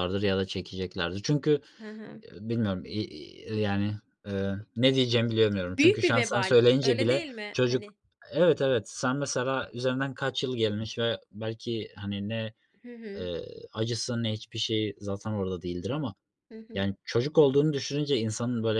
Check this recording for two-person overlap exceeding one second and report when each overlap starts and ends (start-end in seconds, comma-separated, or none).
5.8-7.8